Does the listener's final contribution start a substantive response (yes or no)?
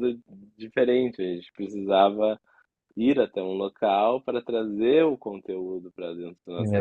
yes